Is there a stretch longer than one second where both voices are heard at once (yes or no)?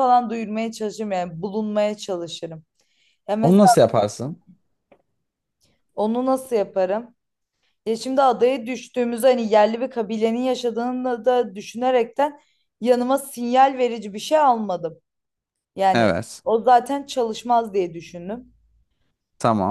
no